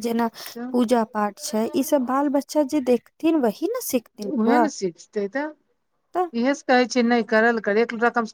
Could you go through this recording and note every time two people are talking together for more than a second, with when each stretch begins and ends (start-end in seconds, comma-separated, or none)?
none